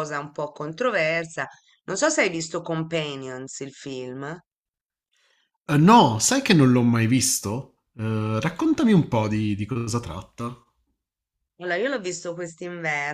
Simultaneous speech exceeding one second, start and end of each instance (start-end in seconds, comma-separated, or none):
none